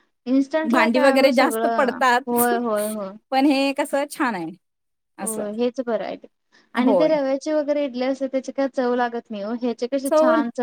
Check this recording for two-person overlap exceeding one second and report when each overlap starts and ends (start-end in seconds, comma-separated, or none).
0.7-2.5